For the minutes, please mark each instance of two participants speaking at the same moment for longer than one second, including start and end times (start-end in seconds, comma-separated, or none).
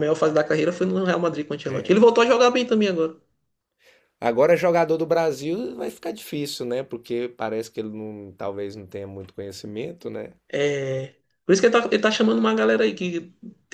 none